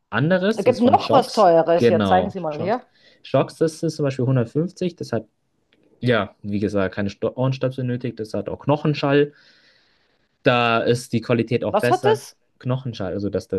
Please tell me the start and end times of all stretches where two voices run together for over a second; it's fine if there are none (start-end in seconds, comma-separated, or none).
0.6-2.8